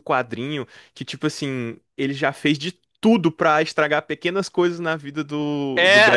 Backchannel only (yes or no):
no